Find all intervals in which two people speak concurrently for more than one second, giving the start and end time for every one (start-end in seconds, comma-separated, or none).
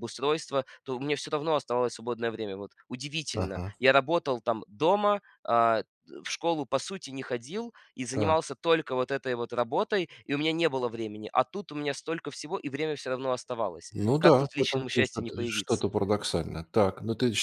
13.9-15.9